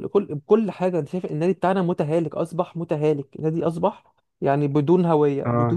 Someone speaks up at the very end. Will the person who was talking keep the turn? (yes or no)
yes